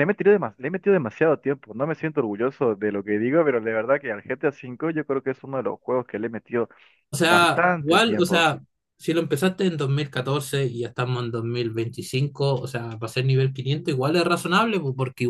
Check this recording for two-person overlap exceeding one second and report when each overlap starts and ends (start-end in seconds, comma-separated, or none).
7.2-8.5